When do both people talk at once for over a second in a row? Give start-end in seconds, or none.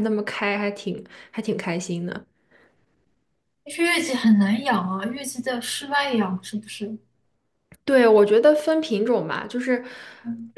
none